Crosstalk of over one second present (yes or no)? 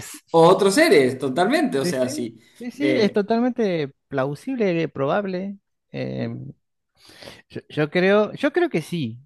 no